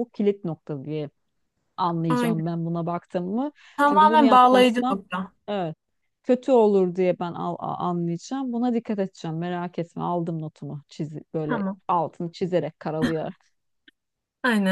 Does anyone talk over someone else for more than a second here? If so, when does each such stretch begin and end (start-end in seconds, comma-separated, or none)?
3.8-5.0